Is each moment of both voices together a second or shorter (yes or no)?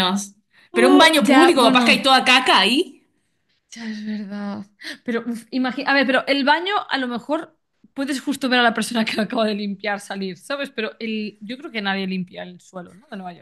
no